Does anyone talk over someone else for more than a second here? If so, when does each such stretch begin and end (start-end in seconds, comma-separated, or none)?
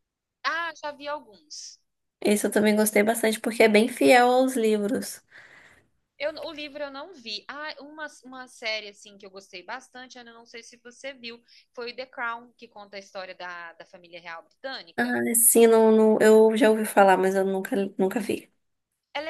none